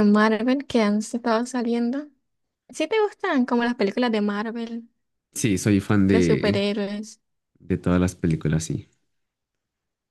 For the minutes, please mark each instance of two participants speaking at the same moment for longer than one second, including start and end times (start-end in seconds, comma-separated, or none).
none